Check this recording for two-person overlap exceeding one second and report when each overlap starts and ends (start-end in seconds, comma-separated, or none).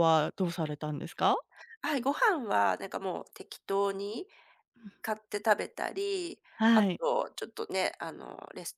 none